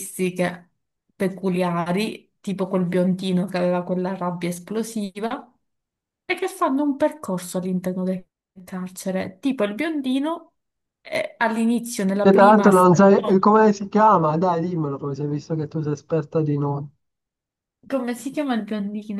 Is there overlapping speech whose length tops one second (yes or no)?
yes